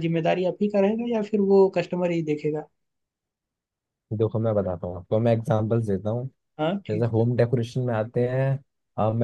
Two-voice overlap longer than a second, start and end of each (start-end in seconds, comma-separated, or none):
none